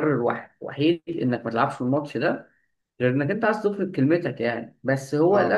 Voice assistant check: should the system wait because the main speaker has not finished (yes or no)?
yes